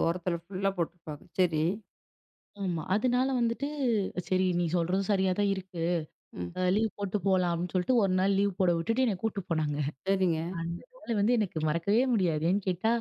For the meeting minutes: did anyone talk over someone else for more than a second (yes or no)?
no